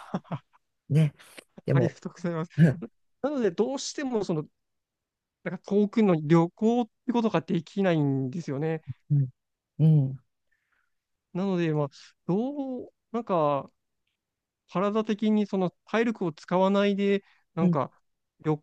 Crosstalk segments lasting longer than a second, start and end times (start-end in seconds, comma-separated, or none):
none